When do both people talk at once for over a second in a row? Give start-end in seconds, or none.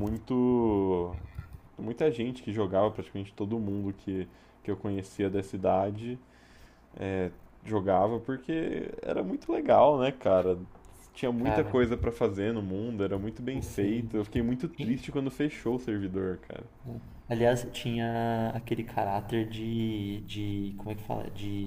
none